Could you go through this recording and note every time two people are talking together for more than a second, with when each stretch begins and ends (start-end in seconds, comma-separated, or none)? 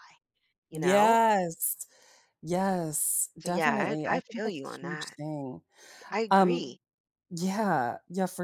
3.4-5.2